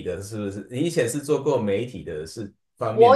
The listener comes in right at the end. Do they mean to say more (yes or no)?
yes